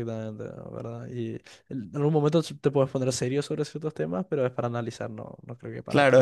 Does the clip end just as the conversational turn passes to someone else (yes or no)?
yes